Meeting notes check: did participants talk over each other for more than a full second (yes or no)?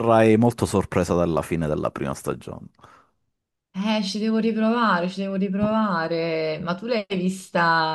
no